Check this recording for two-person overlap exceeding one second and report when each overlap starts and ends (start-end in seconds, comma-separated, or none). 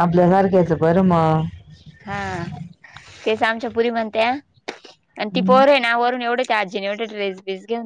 none